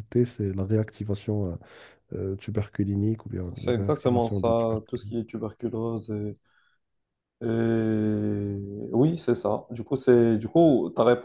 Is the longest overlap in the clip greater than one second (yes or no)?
yes